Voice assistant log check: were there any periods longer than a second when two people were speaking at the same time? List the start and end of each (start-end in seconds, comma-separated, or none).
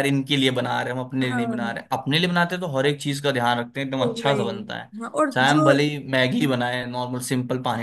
none